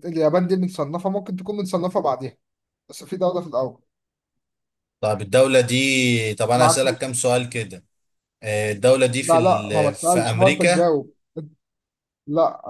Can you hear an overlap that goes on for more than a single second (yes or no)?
yes